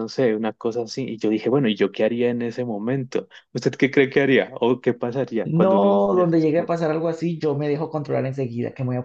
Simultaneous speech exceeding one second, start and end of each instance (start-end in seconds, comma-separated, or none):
5.4-6.7